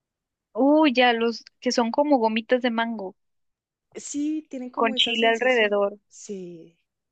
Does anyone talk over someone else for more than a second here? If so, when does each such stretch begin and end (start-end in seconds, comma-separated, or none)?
4.7-6.0